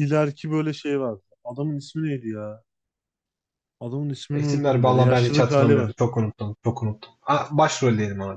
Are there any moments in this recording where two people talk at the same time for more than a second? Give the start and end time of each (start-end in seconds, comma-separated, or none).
4.3-5.9